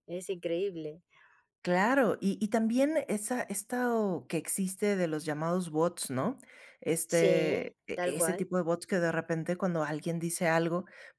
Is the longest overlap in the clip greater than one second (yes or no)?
yes